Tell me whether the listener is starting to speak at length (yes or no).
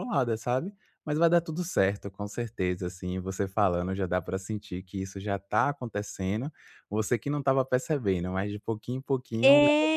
yes